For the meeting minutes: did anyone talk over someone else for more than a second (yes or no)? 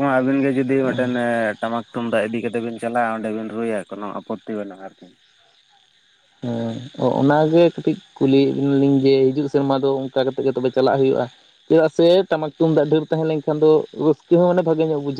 no